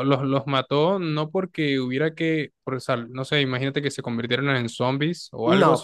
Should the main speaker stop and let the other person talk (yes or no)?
yes